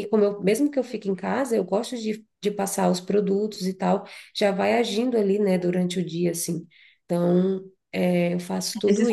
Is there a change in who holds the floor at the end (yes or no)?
yes